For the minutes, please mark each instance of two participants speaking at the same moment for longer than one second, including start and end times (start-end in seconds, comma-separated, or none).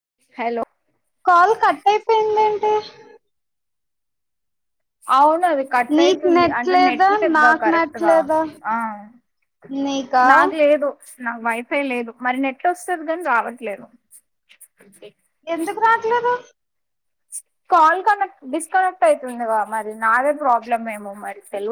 6.0-8.1